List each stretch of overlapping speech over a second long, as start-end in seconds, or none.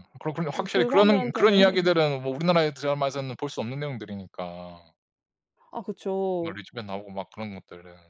0.6-1.9